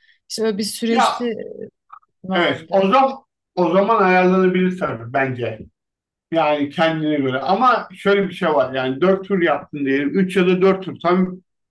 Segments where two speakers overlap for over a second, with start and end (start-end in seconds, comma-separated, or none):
none